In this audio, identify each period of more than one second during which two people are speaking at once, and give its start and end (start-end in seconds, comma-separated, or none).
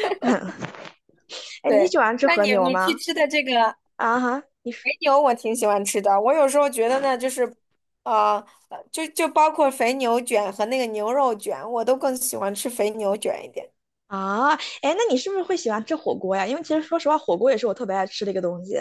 1.6-3.0